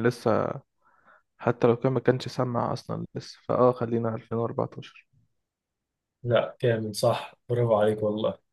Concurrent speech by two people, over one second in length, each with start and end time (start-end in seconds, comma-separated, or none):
none